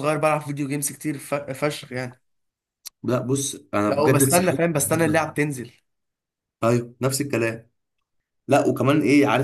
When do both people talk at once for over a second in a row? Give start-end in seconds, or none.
3.9-5.4